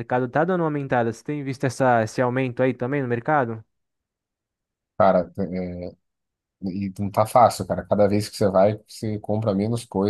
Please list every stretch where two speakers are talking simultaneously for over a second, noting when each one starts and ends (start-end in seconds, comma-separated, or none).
none